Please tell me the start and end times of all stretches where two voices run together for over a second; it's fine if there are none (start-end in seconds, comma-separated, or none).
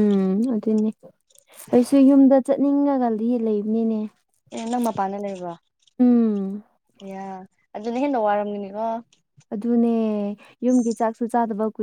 none